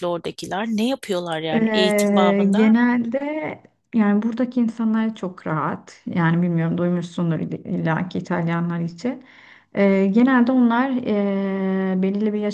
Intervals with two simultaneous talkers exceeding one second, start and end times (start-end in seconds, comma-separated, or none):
1.5-2.7